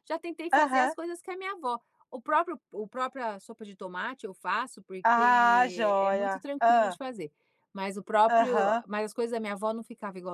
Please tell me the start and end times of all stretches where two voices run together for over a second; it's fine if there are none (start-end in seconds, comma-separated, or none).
5.0-7.0